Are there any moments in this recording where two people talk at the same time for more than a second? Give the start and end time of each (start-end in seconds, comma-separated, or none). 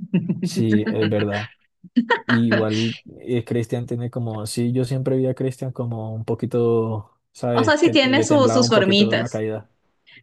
7.5-9.4